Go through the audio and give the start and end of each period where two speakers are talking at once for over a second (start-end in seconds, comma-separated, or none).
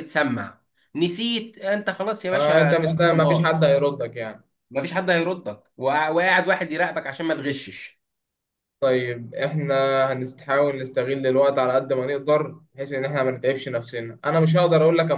2.3-3.5